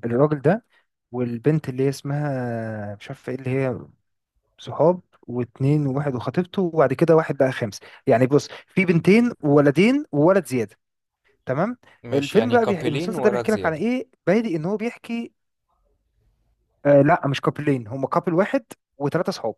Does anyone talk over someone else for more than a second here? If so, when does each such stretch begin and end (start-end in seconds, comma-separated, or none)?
12.1-13.8